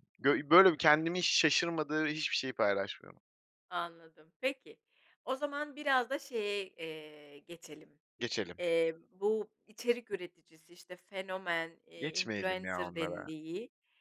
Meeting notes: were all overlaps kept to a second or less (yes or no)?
no